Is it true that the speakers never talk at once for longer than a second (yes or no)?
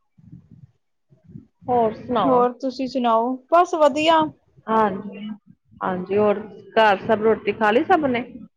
yes